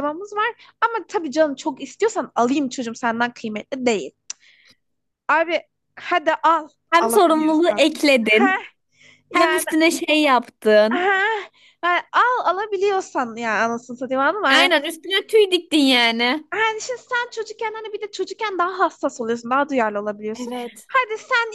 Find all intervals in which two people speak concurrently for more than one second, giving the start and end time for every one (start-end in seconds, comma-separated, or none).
6.9-8.6